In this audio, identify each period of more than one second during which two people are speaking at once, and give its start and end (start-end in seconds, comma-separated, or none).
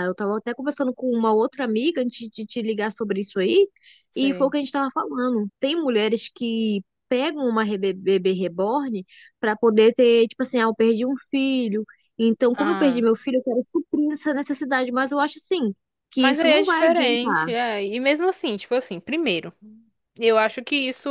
16.2-17.5